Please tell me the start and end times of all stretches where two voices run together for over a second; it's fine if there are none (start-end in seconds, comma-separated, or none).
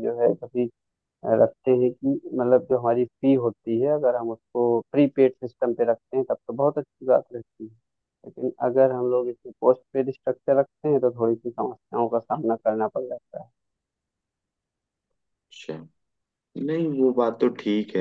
none